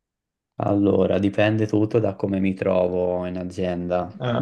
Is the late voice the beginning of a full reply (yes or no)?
no